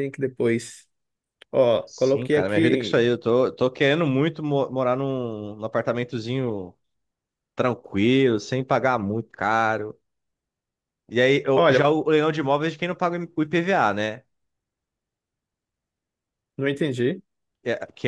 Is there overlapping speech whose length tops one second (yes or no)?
yes